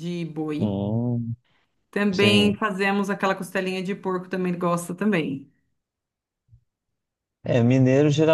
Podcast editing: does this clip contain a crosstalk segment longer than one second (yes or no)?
no